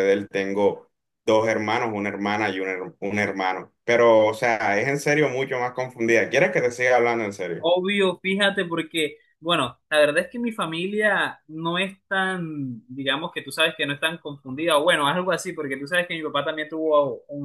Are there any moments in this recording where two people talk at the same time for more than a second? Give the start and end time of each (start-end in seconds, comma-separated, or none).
none